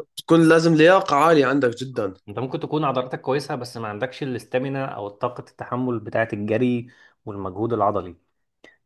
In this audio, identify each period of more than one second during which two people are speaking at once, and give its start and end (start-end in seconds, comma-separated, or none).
none